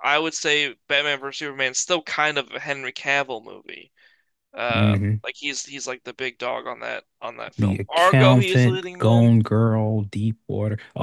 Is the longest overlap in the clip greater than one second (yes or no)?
yes